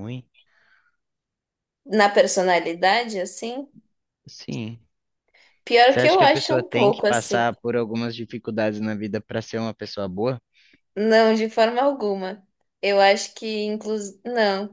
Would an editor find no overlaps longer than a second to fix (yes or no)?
no